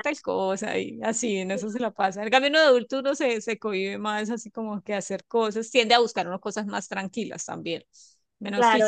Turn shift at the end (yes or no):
yes